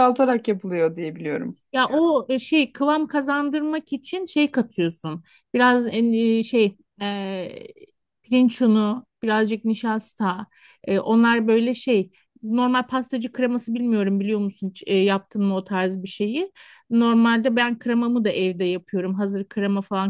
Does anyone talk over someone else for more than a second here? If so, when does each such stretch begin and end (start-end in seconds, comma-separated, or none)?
none